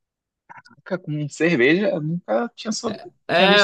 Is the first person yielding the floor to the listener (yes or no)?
yes